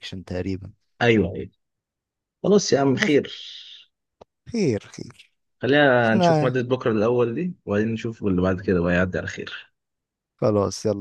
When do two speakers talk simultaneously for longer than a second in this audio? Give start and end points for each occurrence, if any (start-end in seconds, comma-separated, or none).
none